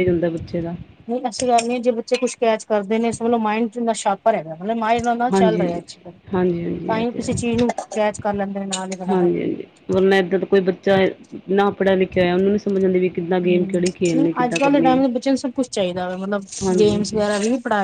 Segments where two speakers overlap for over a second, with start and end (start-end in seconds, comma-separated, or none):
13.4-15.0